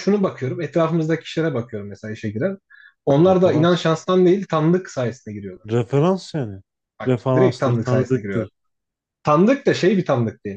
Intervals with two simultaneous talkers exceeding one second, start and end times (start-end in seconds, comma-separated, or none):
7.0-8.5